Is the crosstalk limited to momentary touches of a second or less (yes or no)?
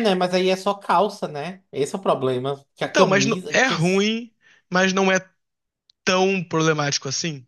no